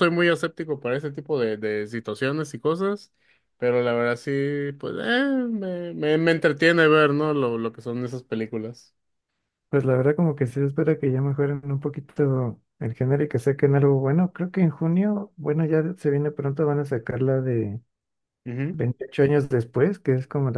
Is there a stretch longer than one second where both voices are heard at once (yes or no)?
no